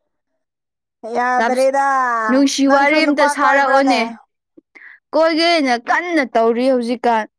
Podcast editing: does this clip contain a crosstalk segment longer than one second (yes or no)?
yes